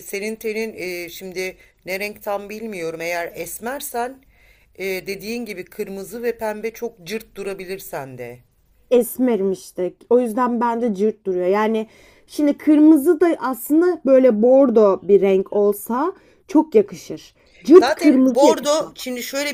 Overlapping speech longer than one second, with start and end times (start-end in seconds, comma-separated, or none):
17.7-18.9